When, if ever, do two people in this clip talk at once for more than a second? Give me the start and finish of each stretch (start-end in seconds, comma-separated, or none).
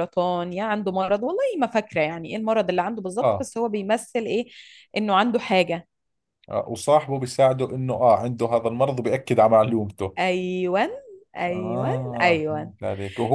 11.5-12.7